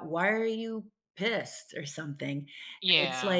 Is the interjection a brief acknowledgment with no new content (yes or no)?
yes